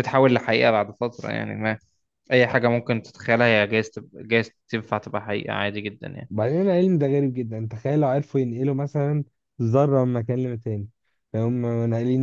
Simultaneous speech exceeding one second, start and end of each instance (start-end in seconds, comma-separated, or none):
none